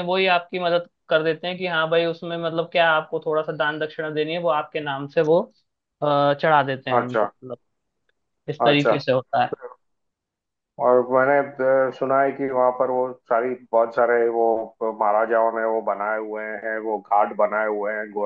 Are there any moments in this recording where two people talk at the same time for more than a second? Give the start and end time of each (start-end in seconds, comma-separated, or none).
none